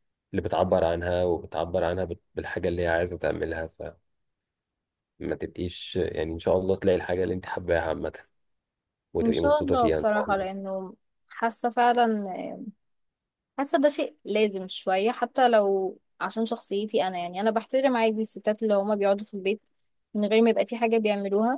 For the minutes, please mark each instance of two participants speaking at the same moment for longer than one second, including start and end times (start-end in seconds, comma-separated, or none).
9.2-10.5